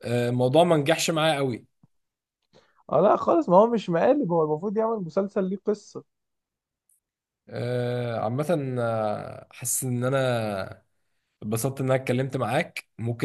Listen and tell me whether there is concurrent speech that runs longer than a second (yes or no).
no